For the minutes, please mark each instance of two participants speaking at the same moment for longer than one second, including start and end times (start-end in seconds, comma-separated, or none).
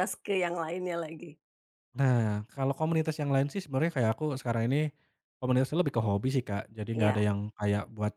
none